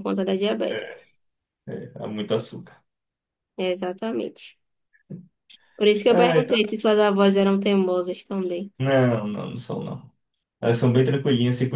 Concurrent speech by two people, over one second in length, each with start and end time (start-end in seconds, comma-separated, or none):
none